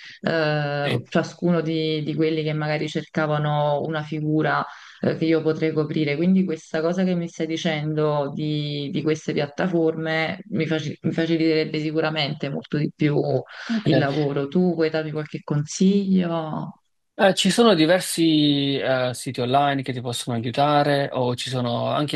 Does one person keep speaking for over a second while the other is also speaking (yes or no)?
no